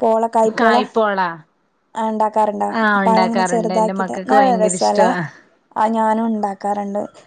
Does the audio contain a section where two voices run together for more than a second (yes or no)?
yes